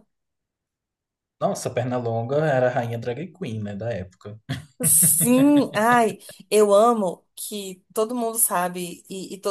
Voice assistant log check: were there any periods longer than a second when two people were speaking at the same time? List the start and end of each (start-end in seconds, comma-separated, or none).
none